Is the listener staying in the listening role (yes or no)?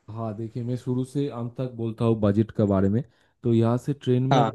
yes